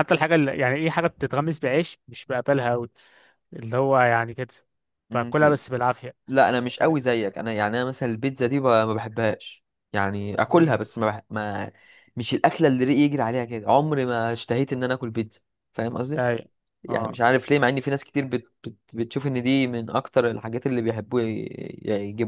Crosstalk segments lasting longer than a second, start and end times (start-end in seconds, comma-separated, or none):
none